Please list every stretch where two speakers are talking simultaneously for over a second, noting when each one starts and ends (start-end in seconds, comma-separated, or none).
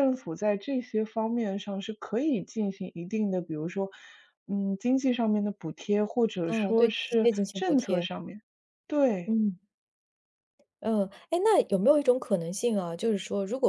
6.5-8.1